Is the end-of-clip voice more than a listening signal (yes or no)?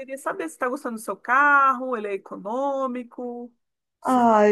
yes